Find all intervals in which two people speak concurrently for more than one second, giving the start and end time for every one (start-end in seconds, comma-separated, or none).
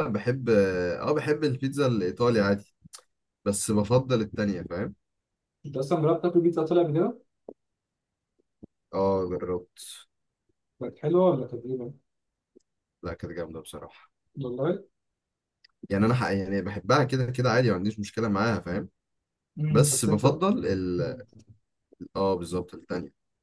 none